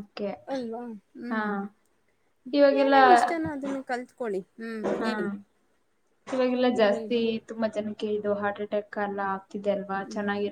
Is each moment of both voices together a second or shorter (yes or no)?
yes